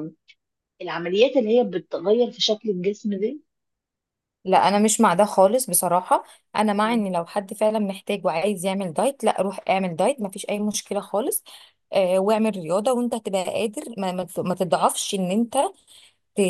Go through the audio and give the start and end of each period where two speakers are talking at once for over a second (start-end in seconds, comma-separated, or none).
none